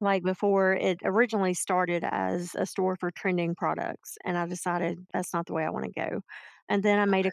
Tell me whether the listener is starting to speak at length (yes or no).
no